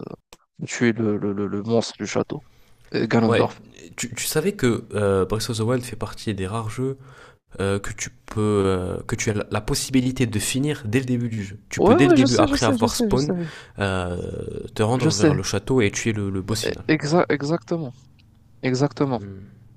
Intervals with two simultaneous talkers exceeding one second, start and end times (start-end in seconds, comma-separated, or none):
11.8-13.3